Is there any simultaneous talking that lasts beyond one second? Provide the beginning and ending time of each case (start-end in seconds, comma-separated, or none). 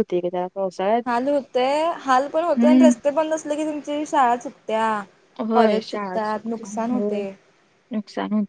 5.5-7.2